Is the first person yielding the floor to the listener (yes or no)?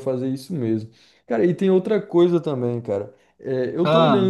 no